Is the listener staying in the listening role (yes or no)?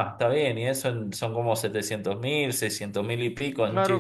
no